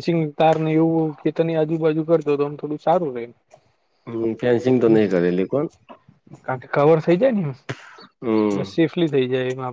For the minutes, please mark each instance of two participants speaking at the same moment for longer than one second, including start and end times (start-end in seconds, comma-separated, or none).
none